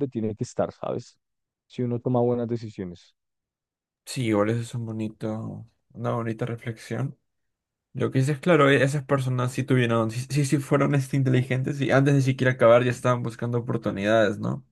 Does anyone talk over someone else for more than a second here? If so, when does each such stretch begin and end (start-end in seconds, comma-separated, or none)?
none